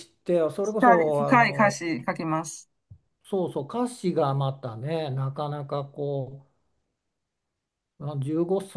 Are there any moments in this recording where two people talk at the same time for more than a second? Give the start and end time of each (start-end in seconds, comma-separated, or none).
0.6-1.8